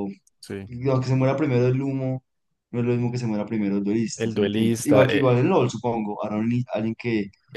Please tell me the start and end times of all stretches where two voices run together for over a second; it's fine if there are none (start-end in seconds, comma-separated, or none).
4.2-5.4